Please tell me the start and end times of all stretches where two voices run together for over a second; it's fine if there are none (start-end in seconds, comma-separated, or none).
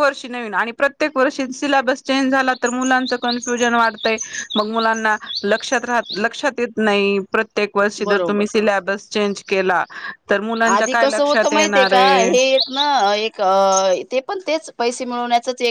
10.7-12.3